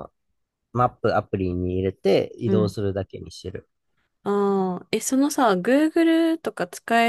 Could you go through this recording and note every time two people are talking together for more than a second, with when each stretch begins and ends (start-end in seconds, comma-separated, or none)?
none